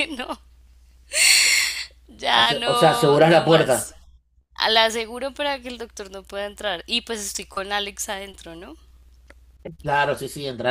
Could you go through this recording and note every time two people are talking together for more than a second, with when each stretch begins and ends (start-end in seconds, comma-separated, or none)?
2.3-3.9